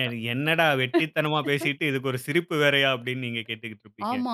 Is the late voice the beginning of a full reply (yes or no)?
yes